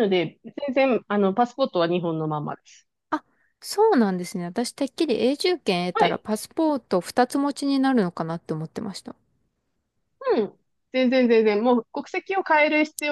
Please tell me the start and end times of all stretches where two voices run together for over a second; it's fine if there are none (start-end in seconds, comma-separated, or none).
none